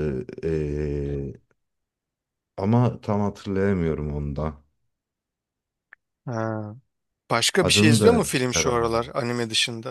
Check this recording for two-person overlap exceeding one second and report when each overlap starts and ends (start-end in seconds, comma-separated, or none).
7.6-9.1